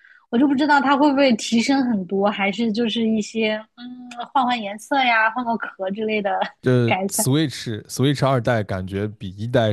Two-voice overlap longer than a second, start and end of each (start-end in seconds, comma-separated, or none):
none